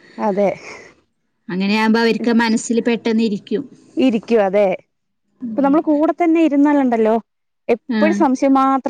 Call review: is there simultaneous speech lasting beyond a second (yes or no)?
no